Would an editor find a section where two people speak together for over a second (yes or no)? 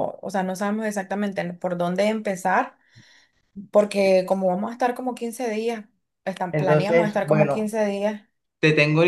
yes